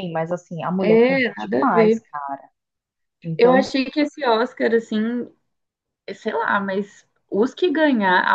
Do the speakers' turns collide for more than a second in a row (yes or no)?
yes